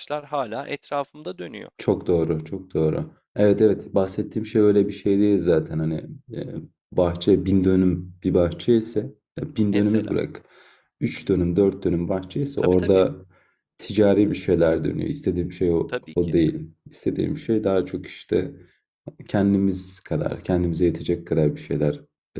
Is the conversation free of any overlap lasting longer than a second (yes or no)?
yes